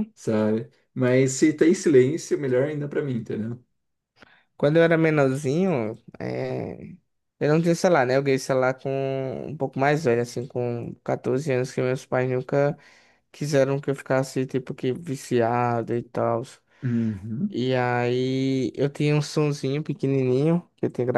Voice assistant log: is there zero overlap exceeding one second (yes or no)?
yes